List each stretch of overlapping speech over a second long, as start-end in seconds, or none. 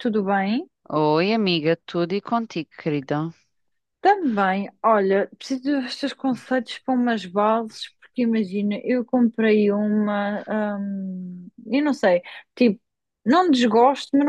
none